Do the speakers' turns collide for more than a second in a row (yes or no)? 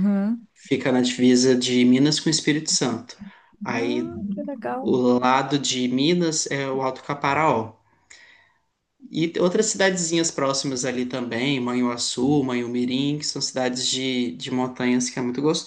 no